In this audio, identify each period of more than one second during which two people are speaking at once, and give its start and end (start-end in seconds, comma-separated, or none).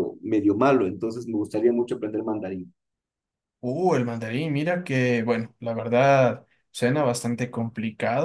none